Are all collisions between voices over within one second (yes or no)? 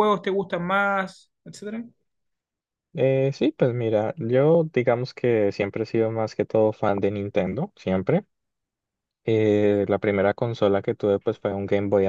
yes